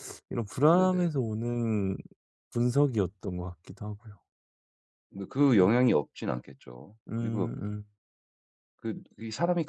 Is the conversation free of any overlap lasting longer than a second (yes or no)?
yes